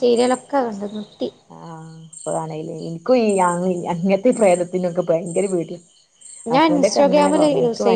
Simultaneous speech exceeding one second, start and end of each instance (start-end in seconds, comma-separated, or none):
none